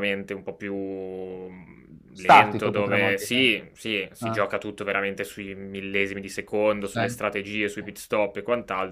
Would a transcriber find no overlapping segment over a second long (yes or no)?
no